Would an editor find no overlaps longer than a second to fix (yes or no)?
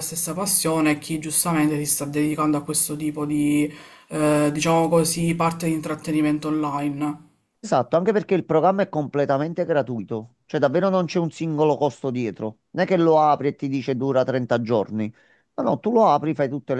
yes